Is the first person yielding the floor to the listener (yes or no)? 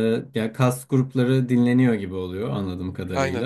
no